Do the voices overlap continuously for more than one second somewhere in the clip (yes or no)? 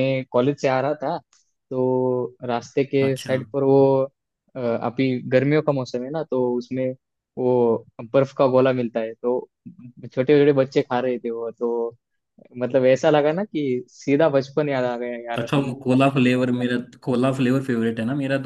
no